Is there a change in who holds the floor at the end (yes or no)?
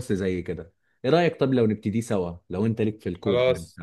yes